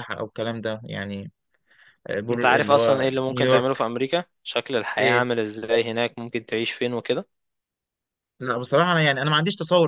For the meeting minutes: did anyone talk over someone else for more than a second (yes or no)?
yes